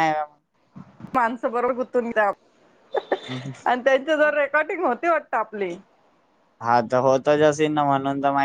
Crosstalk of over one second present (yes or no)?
no